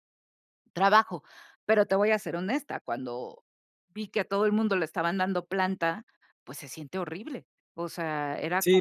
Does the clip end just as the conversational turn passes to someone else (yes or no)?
yes